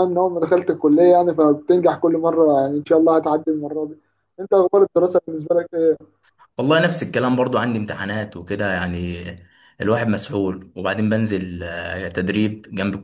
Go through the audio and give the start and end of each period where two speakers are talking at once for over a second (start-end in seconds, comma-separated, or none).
none